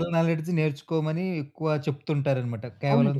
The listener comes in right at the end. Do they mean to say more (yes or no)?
yes